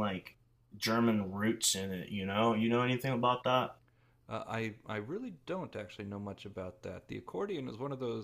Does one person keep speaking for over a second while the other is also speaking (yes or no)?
no